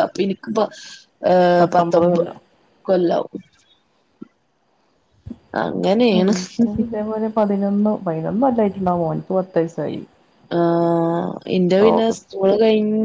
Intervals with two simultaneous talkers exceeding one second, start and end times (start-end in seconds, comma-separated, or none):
none